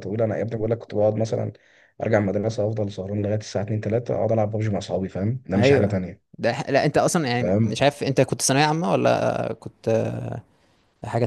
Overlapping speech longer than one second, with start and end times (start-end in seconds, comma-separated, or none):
none